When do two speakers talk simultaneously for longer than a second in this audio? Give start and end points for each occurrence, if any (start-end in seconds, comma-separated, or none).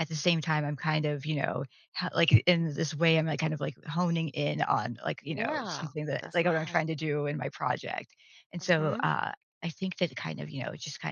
5.3-6.8